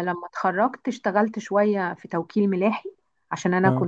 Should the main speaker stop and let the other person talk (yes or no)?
no